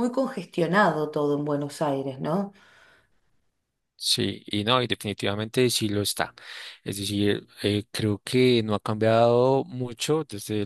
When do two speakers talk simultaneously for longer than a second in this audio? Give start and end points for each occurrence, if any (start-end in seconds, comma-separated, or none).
none